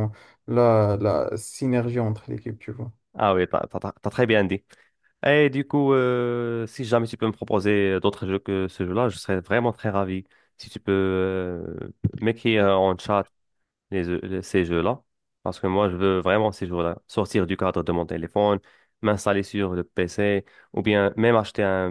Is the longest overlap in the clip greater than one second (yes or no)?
no